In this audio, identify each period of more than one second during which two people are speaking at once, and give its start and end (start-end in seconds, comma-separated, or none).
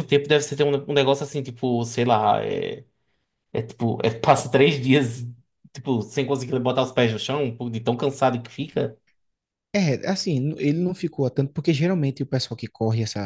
none